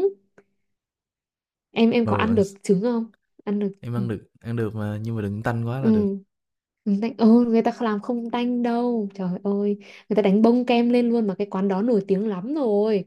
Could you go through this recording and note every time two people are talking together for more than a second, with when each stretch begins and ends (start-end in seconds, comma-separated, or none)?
none